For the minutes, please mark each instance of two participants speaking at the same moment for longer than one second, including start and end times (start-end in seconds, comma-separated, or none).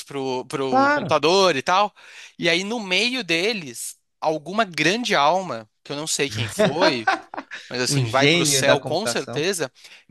7.9-9.5